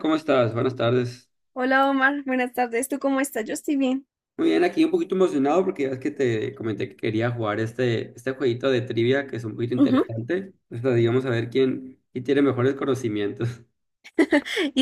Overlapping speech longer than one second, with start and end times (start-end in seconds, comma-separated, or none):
none